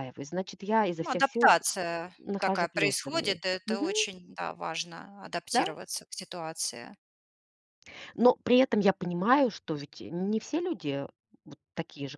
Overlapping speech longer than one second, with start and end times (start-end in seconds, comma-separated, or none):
2.2-3.9